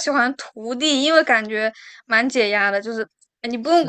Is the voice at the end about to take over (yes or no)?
no